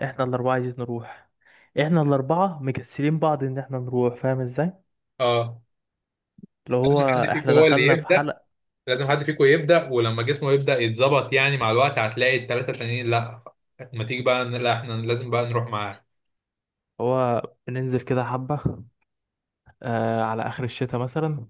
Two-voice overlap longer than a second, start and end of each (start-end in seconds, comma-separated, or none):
6.8-8.3